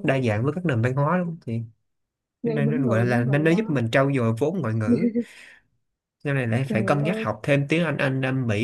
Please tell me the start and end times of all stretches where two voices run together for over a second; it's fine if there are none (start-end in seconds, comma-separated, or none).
2.4-3.8